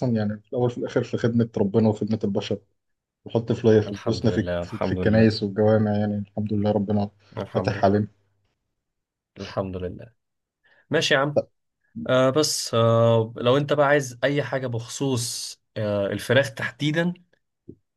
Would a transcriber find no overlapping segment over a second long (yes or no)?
no